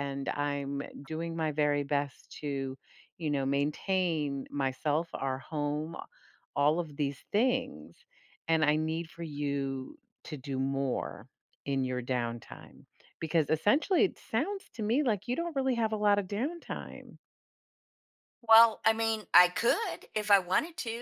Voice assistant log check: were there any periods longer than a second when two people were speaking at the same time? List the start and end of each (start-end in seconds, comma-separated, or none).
none